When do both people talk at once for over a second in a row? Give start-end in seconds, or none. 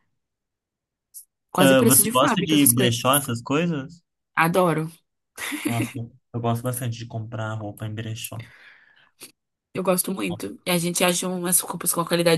1.6-3.0